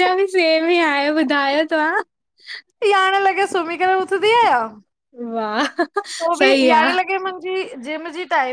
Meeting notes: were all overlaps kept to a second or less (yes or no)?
yes